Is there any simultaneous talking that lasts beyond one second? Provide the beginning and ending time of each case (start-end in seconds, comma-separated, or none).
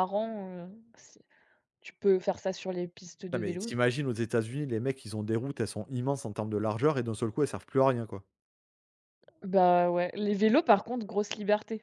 none